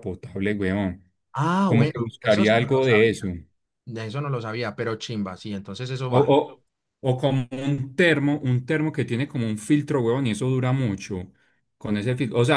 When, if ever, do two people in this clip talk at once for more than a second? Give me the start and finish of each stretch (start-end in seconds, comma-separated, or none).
1.6-3.3